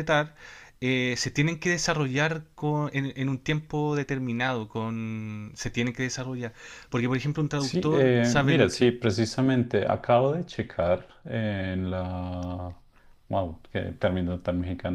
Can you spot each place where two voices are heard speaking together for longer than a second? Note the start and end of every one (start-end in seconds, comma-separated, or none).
7.5-8.9